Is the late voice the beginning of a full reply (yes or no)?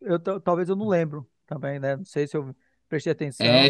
yes